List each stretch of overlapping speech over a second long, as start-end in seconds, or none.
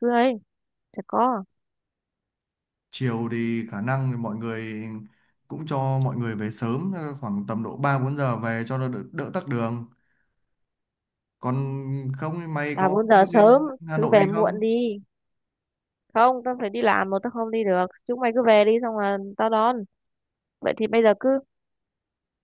12.7-14.7